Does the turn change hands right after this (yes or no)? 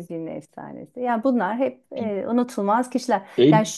yes